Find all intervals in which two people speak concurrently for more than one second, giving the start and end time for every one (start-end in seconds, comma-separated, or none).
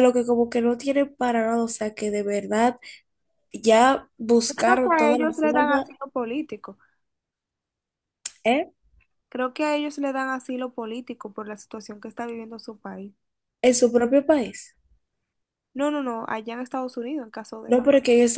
4.5-5.9